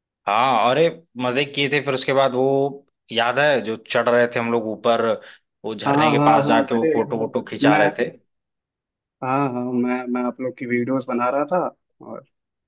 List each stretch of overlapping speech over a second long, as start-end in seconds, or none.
5.9-7.8